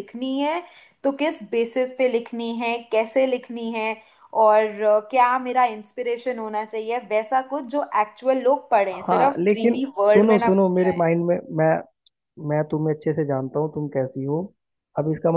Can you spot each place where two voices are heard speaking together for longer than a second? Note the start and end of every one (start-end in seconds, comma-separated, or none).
9.1-10.9